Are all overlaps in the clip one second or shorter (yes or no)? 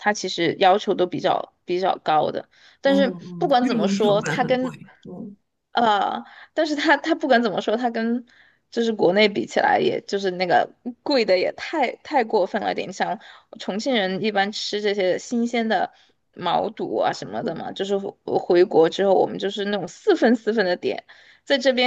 no